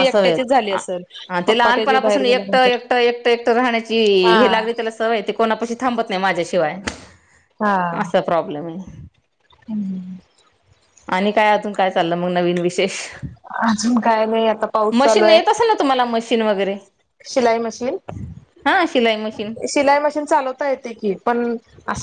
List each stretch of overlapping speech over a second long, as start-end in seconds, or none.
1.5-2.8